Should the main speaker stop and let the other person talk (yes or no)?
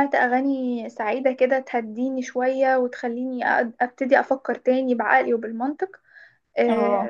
no